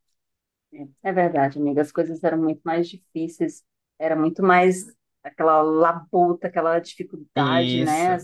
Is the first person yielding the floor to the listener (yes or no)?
no